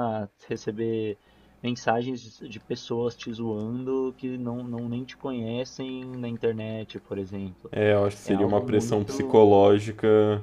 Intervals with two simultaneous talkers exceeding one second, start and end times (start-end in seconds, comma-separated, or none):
8.2-9.5